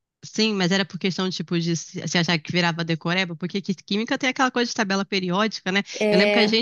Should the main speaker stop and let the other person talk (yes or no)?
no